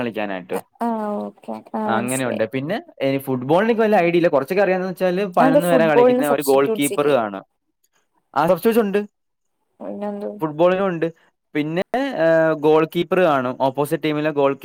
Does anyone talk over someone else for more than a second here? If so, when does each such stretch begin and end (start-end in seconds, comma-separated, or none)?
5.4-7.2